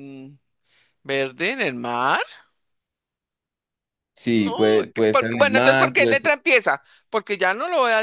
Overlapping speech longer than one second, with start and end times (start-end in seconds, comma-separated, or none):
4.3-6.2